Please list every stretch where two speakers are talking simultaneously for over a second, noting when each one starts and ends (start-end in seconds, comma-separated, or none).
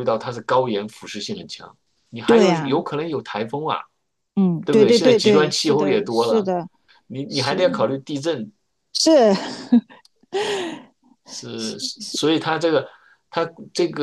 4.6-6.5